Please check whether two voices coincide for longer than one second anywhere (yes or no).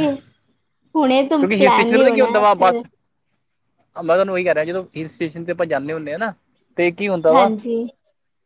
yes